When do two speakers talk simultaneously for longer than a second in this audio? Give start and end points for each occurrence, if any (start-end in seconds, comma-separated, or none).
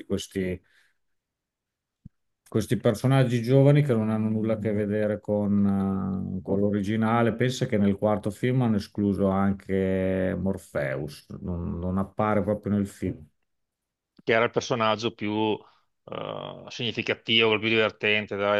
none